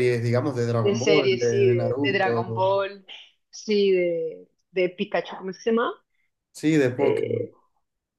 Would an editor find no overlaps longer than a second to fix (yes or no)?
no